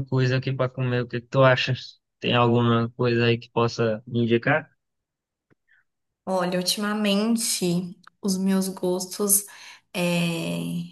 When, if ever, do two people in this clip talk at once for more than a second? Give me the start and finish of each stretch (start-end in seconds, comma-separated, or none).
none